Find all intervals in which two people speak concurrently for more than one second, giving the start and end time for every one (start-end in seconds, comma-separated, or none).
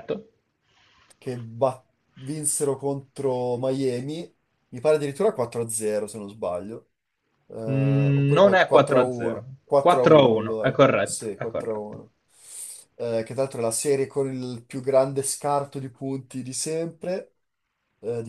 7.7-12.0